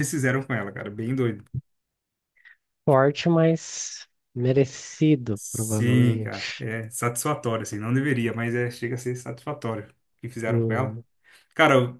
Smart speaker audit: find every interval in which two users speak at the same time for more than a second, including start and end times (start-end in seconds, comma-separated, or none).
5.3-6.7